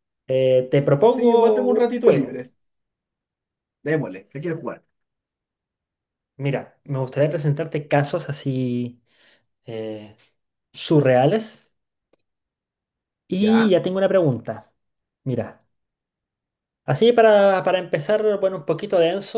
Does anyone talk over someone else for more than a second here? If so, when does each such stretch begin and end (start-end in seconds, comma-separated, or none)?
1.0-2.4